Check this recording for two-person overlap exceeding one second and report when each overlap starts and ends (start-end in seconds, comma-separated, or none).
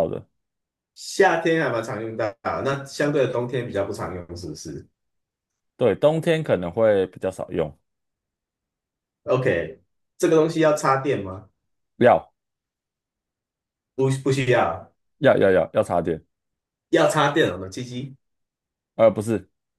none